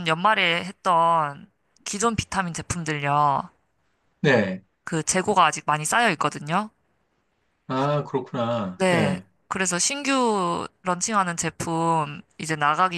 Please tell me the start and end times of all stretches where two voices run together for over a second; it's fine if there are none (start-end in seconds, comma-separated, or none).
none